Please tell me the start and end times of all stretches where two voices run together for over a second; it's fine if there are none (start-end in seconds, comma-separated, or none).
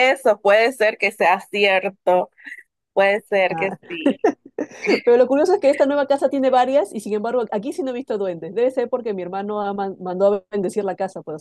none